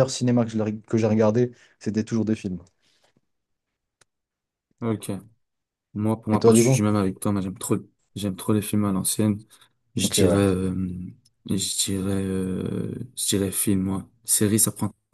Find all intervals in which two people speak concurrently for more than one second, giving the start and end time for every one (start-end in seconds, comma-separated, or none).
none